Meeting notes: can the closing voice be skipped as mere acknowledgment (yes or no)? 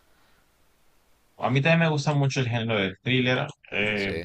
yes